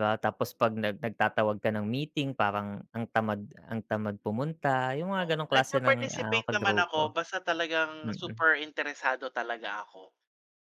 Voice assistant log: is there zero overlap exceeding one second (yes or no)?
no